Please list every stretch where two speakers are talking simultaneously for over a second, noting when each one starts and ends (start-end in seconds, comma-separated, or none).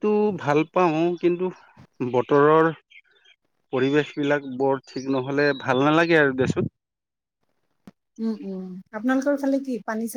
none